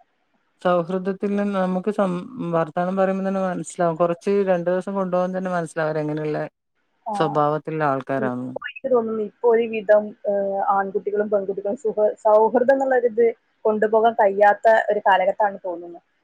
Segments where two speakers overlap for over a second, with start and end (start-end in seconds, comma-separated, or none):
none